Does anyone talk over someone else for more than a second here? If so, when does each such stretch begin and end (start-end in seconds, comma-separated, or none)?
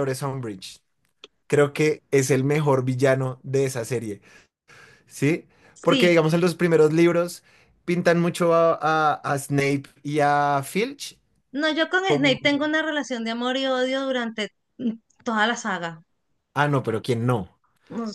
none